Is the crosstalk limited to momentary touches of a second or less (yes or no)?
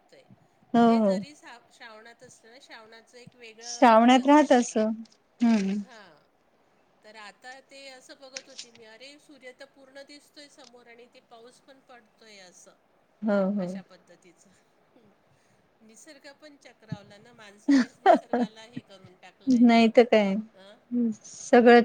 no